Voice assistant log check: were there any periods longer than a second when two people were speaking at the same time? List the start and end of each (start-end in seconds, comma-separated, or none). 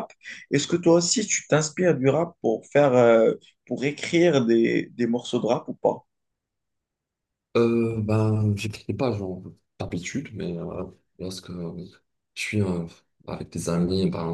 none